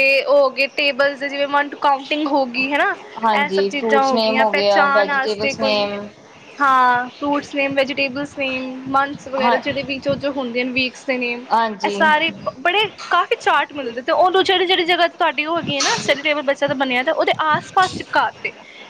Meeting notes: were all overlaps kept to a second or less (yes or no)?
no